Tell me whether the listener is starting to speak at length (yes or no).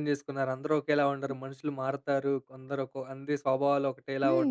yes